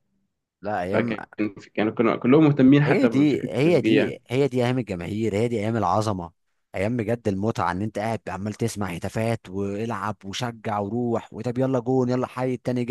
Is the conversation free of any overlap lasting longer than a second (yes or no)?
no